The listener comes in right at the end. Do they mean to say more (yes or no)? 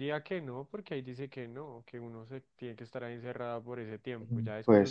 no